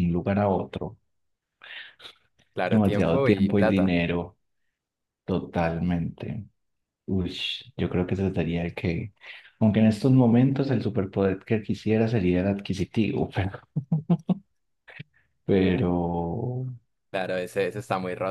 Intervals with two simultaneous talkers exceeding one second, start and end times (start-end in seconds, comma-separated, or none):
2.7-4.0